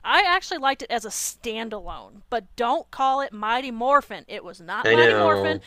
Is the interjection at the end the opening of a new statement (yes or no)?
no